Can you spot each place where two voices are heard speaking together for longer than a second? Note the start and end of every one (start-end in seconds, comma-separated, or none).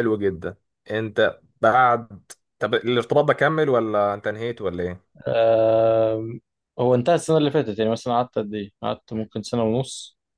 none